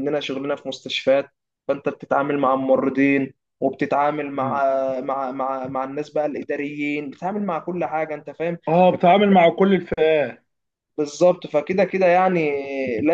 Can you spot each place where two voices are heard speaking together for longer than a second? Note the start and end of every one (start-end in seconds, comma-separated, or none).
none